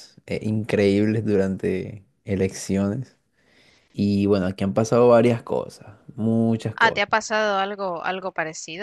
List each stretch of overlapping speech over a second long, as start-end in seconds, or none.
none